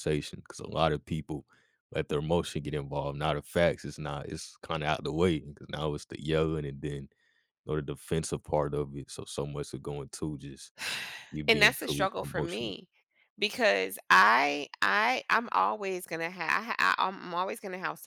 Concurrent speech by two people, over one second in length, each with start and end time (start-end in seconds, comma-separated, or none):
11.5-12.8